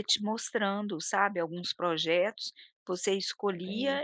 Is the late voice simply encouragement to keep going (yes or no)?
yes